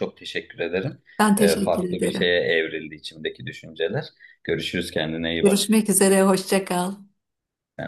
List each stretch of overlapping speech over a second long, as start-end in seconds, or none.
1.2-2.4